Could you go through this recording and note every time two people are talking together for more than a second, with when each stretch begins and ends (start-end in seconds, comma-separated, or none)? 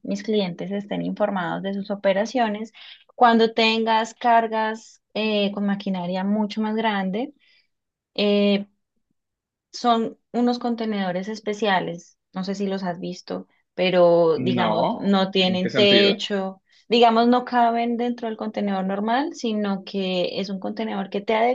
14.6-16.2